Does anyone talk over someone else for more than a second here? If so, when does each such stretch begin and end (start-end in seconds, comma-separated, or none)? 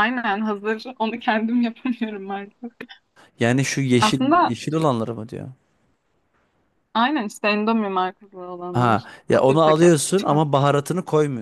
8.7-10.3